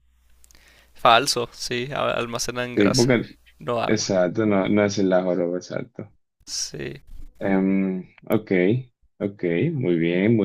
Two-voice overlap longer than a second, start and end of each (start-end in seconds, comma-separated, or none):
none